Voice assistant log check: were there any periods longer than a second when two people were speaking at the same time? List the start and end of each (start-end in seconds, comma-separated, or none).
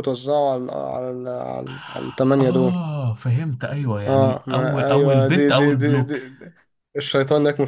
4.1-6.2